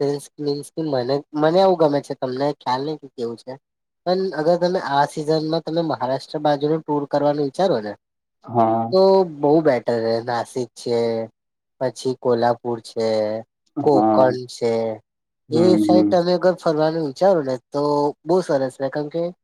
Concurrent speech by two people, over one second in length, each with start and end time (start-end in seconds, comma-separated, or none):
none